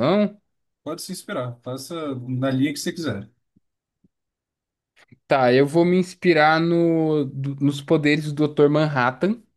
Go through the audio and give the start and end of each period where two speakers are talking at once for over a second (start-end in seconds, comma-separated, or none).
none